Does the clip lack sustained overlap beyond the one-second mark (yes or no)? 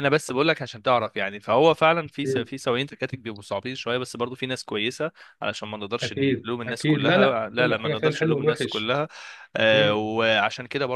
no